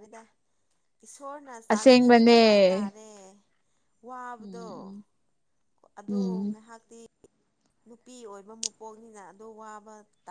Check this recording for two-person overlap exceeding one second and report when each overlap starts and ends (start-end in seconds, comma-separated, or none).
1.7-2.9